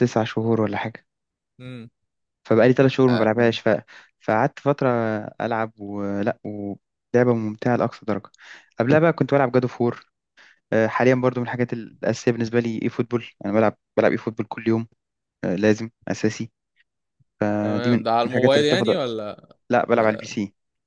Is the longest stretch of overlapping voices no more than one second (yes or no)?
no